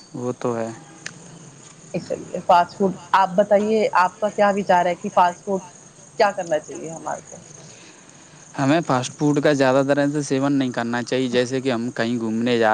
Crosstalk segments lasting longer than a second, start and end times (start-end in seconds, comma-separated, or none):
none